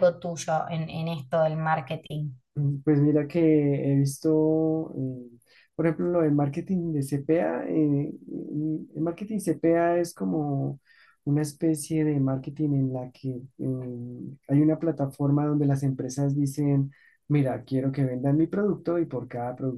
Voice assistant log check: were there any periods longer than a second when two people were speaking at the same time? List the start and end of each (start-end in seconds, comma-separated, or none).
none